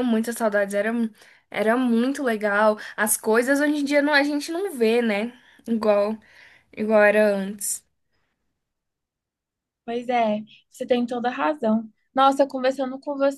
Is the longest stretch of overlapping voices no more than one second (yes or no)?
yes